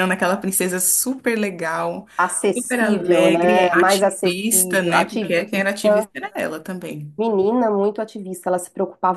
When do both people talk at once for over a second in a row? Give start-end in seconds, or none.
2.5-6.1